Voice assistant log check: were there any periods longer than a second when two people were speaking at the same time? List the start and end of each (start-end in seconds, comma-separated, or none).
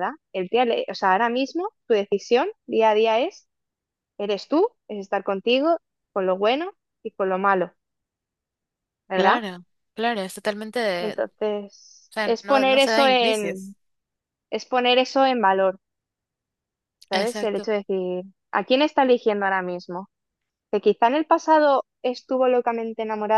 12.1-13.7